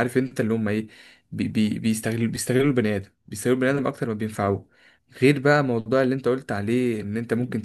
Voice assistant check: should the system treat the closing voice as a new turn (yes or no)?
no